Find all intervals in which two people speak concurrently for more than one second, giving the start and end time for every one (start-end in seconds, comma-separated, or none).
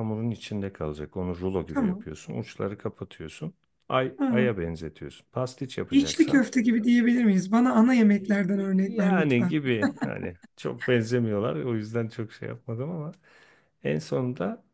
8.0-9.5